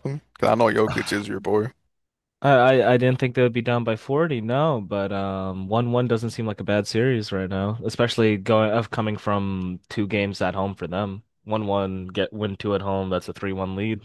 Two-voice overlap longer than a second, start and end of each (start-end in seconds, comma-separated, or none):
none